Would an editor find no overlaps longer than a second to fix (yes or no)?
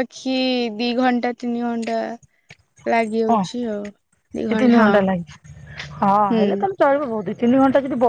yes